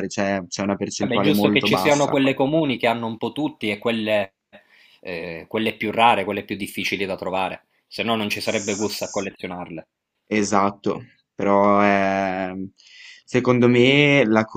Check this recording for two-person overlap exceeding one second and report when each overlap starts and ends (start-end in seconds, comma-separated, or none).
1.0-2.2